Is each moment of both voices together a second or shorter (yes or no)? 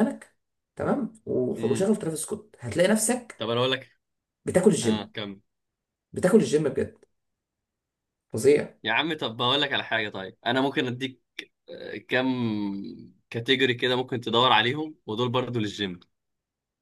yes